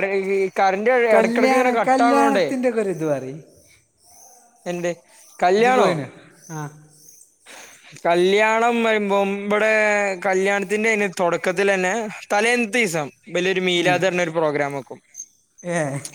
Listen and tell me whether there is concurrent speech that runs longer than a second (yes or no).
yes